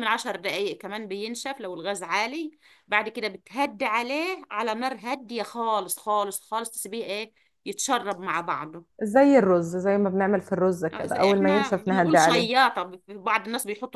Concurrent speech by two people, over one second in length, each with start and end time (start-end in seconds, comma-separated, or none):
10.9-12.5